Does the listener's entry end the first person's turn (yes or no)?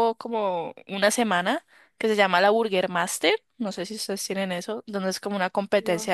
no